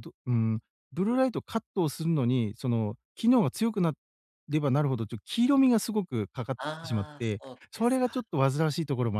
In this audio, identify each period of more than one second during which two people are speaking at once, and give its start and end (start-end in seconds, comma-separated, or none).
6.6-8.2